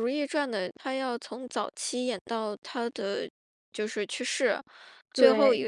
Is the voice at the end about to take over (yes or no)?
no